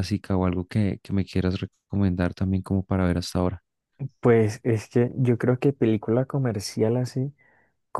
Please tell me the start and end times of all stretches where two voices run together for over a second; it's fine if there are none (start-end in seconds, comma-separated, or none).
none